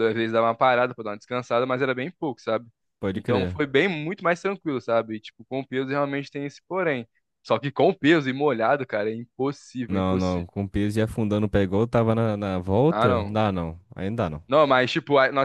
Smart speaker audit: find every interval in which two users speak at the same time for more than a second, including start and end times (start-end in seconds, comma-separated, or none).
none